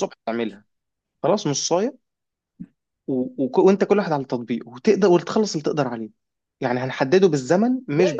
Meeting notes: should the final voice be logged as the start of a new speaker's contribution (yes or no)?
yes